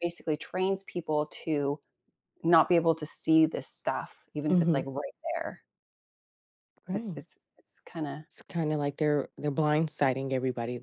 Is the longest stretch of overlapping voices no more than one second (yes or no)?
yes